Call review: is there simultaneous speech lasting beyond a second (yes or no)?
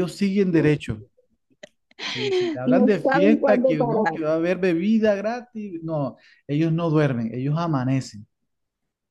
yes